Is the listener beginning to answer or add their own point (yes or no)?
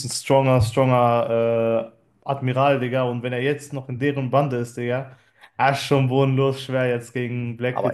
yes